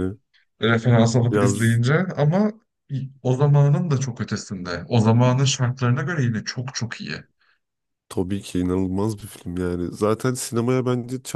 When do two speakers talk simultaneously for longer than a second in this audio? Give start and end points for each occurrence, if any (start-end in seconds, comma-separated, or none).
none